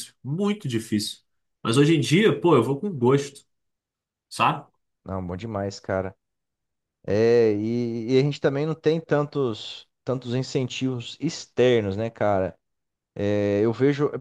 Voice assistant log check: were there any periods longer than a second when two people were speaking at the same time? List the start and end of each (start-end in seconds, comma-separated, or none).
none